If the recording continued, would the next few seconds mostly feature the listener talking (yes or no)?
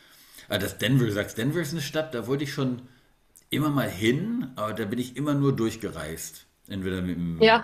no